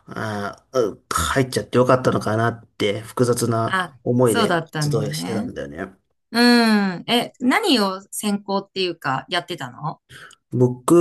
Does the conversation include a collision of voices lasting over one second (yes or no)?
yes